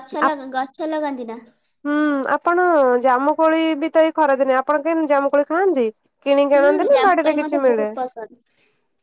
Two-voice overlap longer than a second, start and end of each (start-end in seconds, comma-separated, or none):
6.5-7.9